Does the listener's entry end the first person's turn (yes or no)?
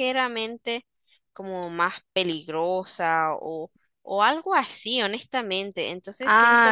yes